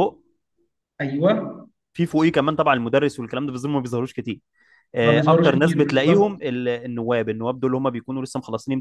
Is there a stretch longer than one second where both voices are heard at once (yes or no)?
yes